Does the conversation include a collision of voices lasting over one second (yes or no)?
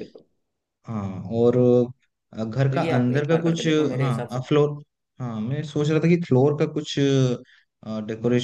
yes